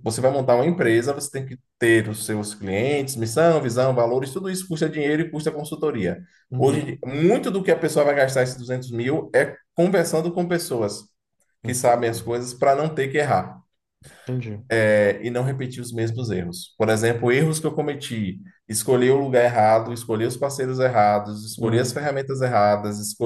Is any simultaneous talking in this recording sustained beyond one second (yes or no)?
no